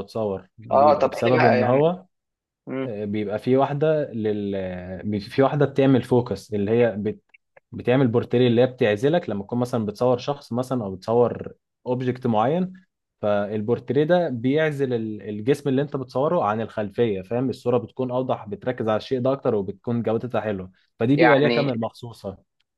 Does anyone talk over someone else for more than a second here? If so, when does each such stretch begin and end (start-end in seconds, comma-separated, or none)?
0.7-1.9